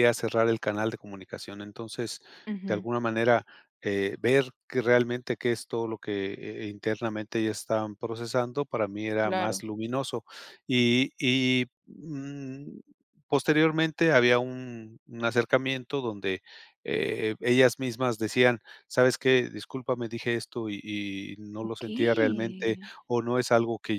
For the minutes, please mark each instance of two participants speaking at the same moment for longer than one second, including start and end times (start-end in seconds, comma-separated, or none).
21.6-22.9